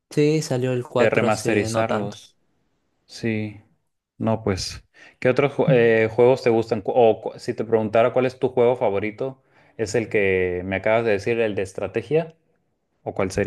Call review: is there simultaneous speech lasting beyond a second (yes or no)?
yes